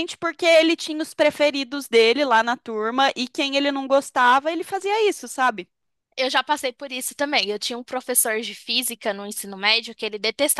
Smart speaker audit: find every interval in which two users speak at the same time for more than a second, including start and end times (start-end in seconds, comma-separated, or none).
none